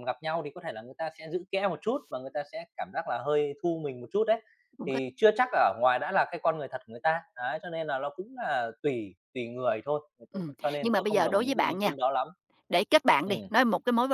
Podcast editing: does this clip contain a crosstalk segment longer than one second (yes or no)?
yes